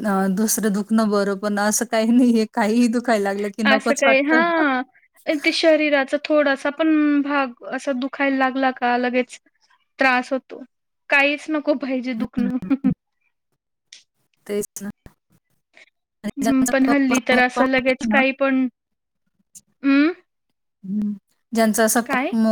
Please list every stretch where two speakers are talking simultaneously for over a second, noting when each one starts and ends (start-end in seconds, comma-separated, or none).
16.4-18.2